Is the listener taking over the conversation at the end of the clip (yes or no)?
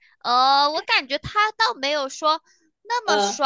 no